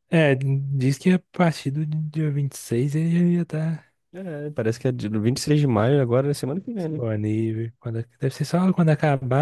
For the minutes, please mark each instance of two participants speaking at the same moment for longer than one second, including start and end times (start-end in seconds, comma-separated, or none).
none